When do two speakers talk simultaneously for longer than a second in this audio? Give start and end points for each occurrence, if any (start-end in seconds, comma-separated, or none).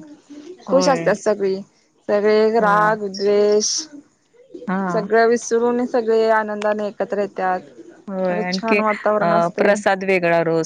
8.3-9.8